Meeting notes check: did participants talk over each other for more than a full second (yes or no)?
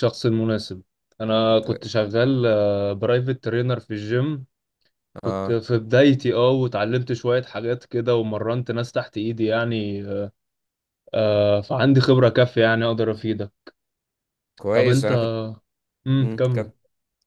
no